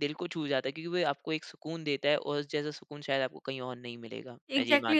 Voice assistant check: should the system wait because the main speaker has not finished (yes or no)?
no